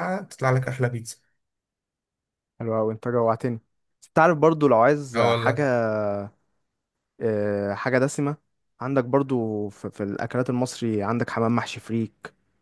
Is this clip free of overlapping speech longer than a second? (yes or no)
yes